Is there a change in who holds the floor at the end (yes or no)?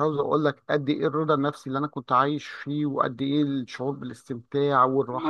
yes